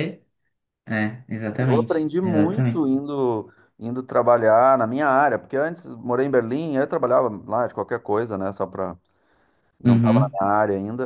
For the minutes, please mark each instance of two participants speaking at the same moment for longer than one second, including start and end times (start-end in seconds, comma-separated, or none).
1.6-2.9